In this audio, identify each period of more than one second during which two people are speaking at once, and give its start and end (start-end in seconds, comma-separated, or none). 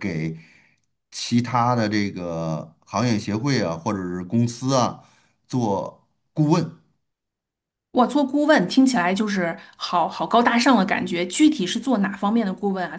none